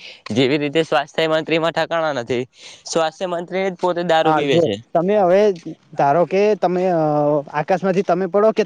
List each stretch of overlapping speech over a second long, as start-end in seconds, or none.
none